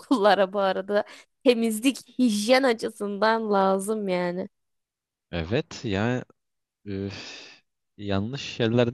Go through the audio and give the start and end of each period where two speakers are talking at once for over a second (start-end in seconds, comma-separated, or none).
none